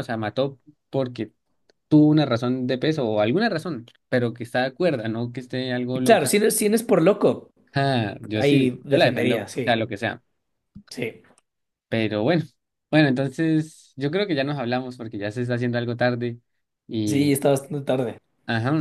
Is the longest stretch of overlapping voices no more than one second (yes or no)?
no